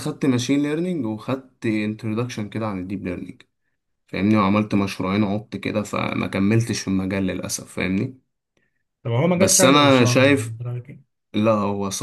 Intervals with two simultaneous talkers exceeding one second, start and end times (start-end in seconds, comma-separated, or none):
9.3-10.6